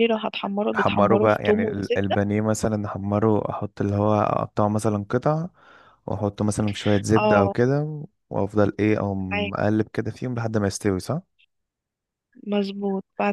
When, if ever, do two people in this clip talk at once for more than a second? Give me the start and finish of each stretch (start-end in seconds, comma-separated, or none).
0.8-2.2